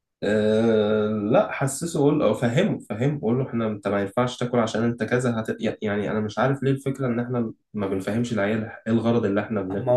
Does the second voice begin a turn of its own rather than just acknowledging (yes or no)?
yes